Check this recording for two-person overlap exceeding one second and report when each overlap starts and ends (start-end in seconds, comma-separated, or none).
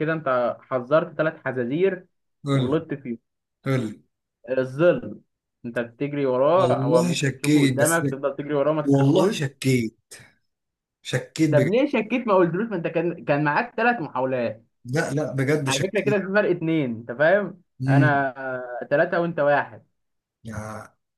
6.5-8.0